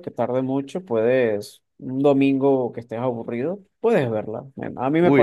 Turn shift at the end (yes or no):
yes